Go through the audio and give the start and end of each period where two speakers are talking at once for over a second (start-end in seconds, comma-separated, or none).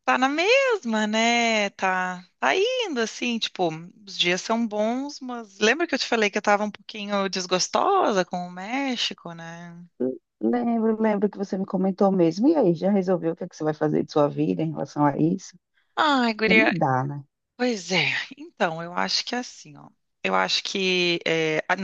none